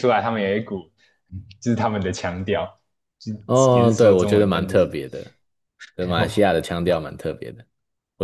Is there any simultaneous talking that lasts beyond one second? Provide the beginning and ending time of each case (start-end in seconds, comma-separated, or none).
3.7-4.9